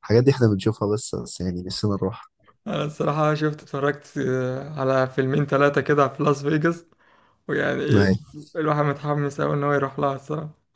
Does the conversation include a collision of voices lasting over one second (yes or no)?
no